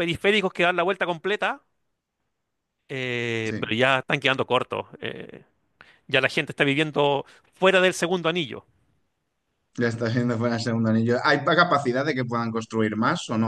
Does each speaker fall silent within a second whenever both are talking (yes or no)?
yes